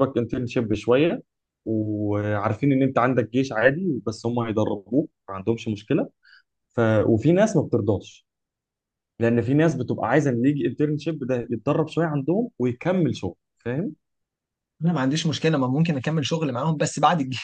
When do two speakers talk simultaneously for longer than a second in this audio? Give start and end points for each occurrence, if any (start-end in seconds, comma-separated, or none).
none